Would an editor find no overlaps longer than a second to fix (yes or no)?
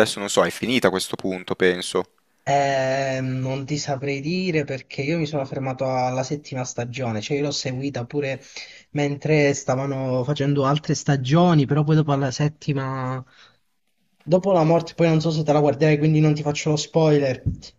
yes